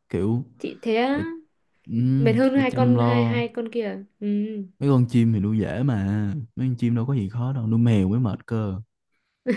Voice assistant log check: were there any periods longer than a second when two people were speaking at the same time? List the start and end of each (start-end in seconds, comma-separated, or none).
2.2-3.4